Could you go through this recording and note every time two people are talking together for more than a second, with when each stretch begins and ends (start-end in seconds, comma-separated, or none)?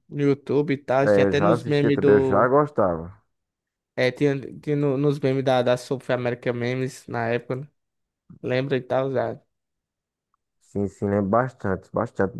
1.0-2.5